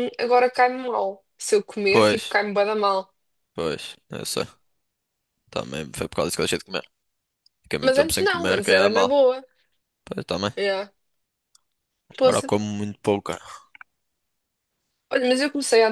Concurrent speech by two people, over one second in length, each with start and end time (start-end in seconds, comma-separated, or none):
7.8-9.1